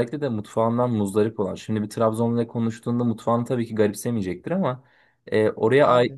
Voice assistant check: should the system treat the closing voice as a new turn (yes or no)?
no